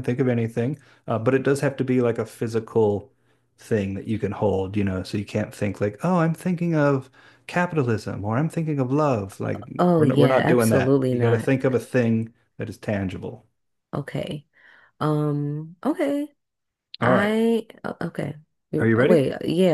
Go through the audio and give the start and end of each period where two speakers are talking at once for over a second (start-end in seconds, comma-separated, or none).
9.8-11.5